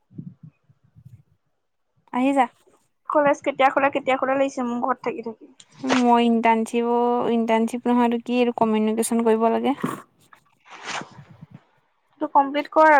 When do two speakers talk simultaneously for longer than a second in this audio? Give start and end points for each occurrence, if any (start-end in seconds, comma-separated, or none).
none